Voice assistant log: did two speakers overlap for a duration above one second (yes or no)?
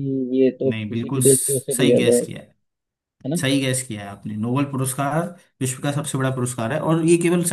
yes